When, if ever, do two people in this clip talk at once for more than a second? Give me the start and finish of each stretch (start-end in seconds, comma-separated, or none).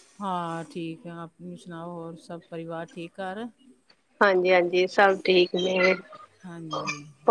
none